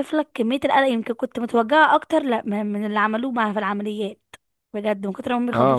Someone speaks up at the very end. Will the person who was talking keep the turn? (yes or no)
no